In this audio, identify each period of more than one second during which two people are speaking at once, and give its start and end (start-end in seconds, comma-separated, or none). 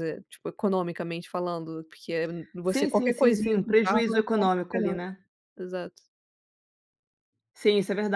2.6-5.0